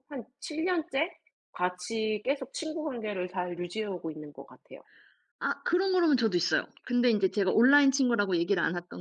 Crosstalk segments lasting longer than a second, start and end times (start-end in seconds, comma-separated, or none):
none